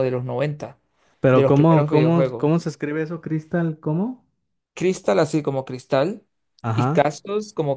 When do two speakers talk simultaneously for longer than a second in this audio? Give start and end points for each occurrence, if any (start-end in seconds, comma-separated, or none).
1.3-2.5